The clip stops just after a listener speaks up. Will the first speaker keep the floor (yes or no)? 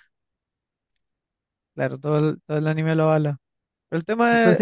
no